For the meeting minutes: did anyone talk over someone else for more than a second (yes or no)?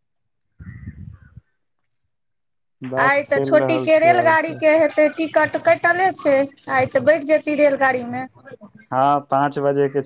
yes